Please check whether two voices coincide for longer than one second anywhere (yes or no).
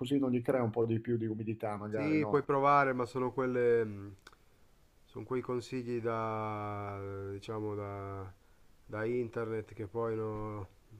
no